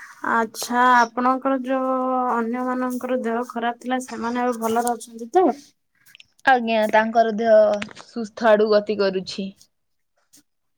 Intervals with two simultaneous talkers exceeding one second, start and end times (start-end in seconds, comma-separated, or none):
none